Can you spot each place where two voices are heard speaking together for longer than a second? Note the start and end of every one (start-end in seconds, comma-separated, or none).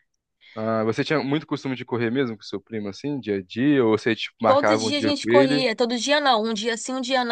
4.5-5.7